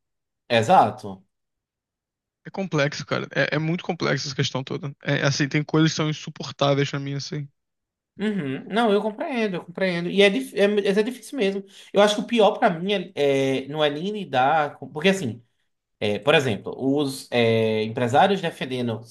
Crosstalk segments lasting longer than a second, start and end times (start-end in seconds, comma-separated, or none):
none